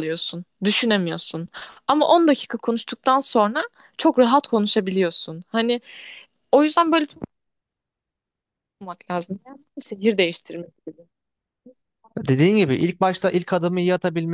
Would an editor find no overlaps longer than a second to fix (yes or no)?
yes